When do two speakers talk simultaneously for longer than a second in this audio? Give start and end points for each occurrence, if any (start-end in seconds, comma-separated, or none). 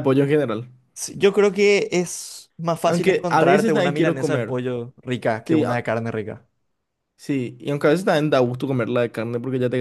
2.8-4.5